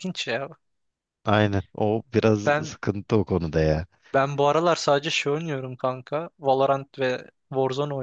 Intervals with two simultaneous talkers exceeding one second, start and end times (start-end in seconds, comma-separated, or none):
none